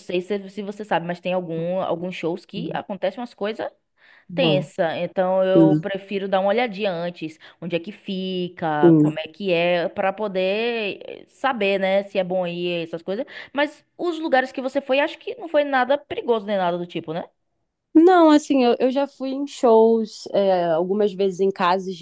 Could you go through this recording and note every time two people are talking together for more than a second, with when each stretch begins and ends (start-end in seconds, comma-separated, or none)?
none